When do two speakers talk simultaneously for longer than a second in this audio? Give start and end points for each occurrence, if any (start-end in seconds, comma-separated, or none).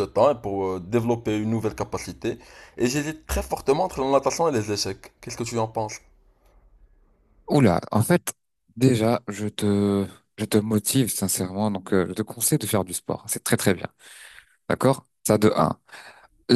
none